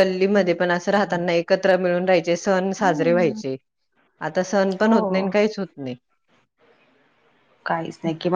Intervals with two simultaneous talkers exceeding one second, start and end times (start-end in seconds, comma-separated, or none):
none